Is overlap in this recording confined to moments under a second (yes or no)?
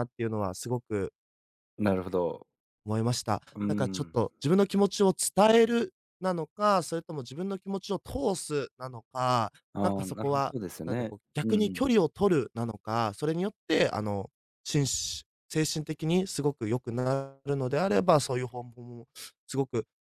no